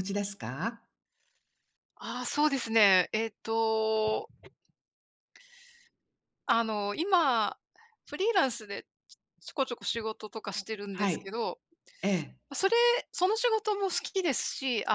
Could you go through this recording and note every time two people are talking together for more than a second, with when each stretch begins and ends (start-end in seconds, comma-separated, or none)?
none